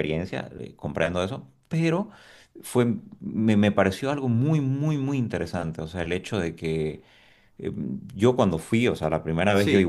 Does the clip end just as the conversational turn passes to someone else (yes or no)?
no